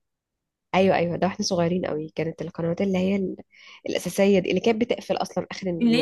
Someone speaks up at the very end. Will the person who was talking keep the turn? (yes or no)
no